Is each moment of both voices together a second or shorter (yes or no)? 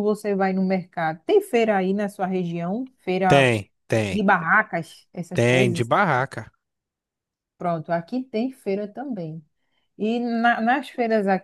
yes